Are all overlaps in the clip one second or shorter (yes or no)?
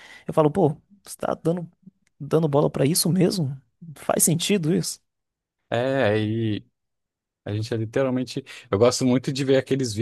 yes